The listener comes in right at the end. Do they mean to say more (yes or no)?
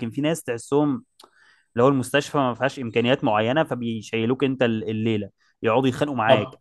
yes